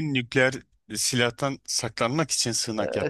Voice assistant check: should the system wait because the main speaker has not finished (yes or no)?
no